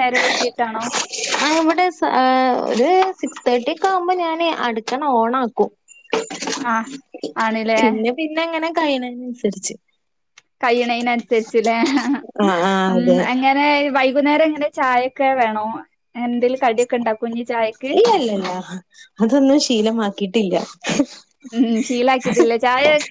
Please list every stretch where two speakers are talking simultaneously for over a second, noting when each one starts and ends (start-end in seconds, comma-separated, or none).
none